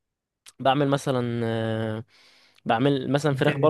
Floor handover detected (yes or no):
no